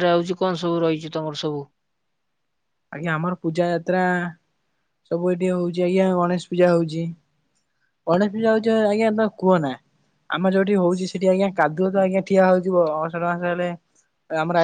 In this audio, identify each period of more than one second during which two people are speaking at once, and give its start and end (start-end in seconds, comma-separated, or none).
none